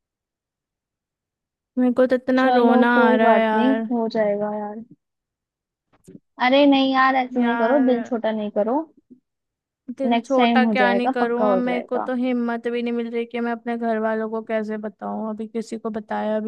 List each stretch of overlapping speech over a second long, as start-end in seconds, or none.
2.4-3.8, 10.1-12.1